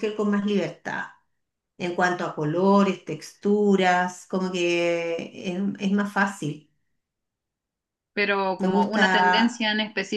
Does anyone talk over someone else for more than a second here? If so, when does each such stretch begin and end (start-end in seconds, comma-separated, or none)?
none